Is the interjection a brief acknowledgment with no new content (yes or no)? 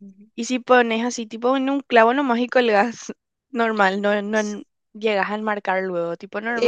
no